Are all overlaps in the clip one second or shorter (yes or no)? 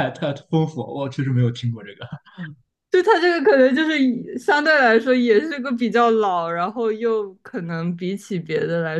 yes